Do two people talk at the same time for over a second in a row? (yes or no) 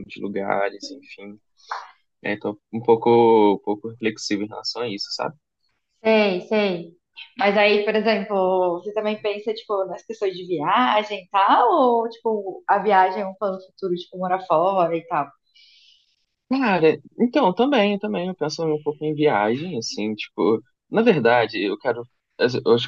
no